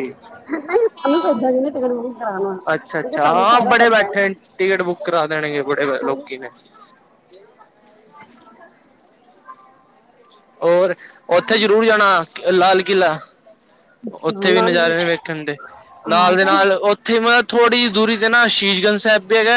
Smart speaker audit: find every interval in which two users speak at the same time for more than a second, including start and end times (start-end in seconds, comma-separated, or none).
2.7-4.4